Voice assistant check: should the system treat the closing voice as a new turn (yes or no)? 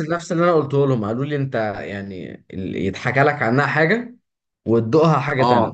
yes